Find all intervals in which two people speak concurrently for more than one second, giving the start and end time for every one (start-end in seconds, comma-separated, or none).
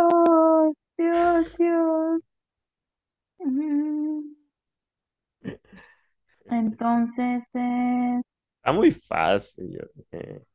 none